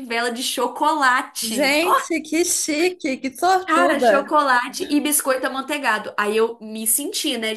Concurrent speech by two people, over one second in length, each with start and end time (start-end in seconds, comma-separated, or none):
none